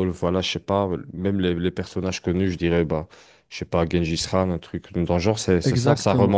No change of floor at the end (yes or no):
no